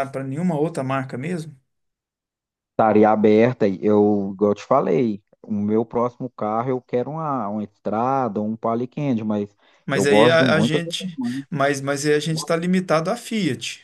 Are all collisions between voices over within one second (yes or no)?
no